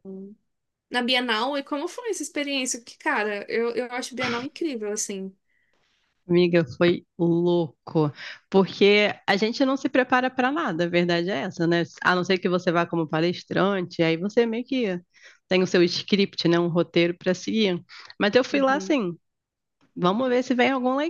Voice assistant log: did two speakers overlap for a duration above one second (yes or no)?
no